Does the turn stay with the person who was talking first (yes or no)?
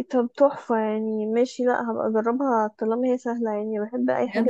no